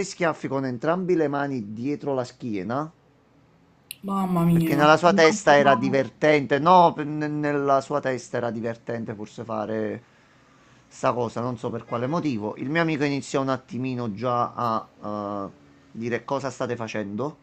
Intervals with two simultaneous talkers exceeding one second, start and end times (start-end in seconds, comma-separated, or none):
4.5-6.0